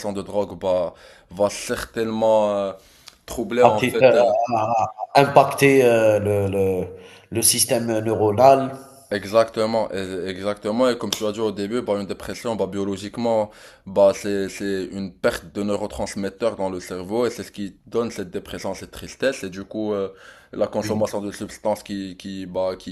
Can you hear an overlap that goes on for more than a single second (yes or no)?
no